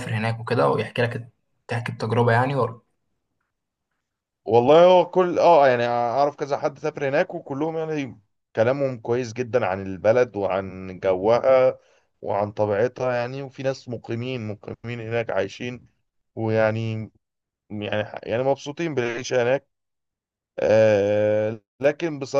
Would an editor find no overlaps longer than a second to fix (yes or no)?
yes